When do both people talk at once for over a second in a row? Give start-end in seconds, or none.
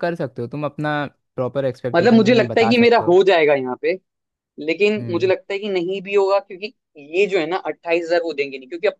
1.9-3.1